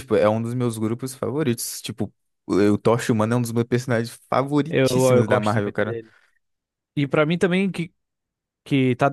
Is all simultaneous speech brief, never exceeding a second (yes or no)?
no